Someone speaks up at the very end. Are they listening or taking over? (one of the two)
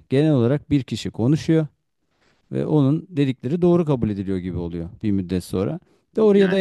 listening